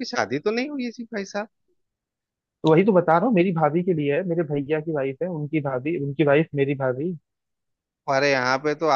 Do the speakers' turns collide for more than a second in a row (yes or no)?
no